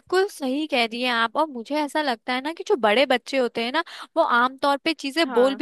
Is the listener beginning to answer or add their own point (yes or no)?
no